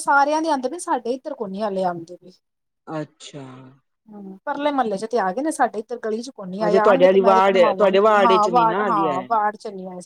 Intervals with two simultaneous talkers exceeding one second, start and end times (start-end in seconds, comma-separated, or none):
6.7-9.3